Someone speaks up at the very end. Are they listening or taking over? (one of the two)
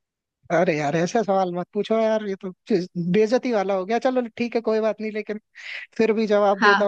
taking over